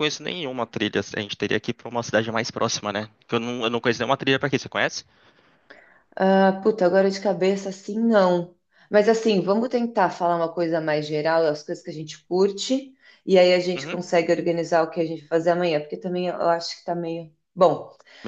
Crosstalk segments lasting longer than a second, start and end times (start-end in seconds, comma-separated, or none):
none